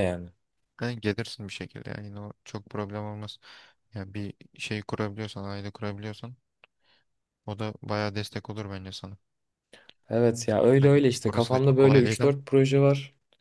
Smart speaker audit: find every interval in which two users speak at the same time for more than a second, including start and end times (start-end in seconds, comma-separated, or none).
10.8-12.3